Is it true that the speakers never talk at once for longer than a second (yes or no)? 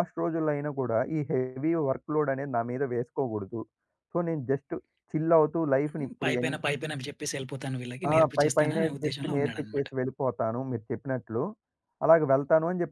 no